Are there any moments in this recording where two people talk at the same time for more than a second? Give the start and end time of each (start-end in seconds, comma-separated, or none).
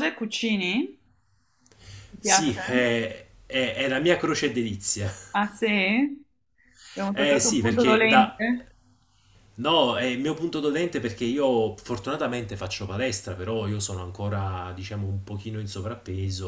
7.1-8.4